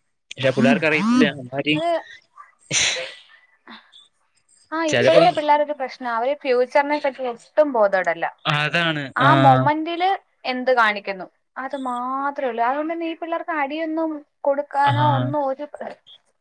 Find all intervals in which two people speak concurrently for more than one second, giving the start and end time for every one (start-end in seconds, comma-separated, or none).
0.6-1.8